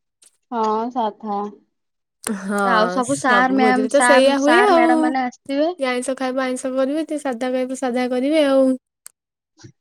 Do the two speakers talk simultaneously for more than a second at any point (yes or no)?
yes